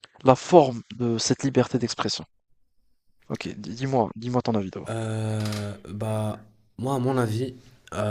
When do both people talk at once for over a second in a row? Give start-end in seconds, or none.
none